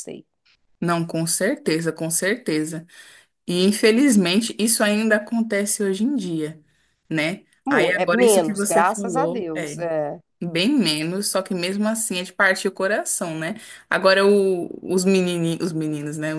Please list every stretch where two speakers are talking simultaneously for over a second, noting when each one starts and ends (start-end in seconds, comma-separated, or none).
7.6-9.8